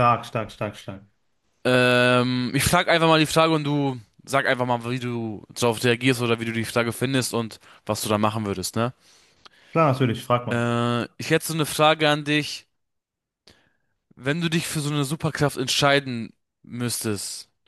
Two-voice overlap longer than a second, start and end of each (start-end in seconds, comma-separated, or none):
none